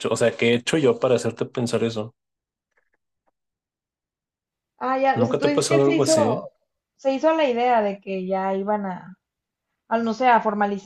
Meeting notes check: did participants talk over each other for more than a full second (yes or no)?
yes